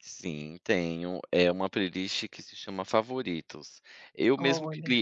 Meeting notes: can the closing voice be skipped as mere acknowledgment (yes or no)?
yes